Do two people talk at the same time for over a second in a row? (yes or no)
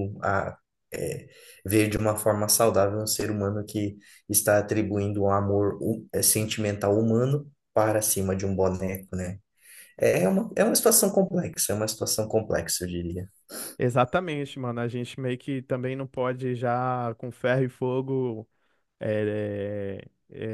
no